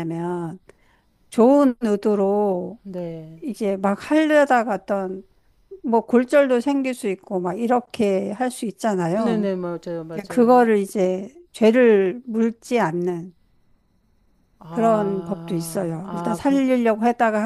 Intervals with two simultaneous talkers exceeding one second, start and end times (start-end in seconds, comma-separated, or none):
14.7-16.6